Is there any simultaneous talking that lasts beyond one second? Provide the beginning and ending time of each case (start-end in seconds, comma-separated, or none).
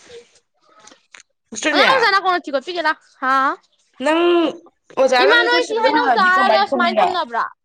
5.2-7.1